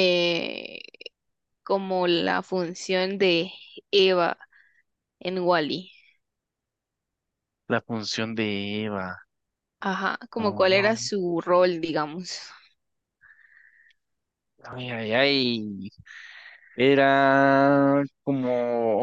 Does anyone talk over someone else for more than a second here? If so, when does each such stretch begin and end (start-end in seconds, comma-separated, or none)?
none